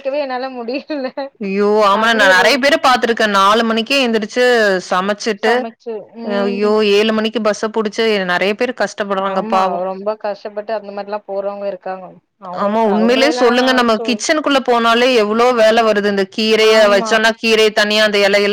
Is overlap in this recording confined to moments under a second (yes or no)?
no